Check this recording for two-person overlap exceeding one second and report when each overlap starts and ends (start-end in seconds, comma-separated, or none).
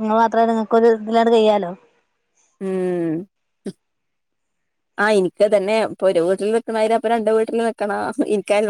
none